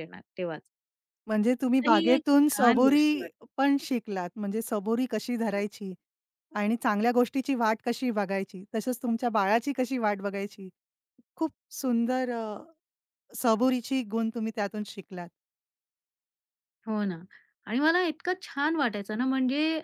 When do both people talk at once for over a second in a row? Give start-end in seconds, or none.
1.8-3.5